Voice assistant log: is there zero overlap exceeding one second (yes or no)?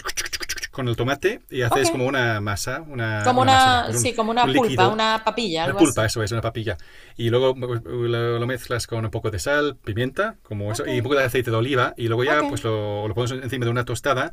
no